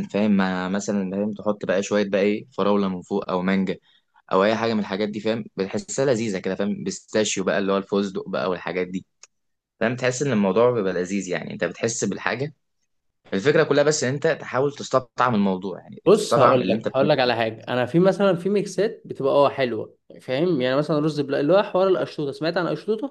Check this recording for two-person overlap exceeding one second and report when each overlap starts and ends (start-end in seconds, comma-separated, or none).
16.1-17.3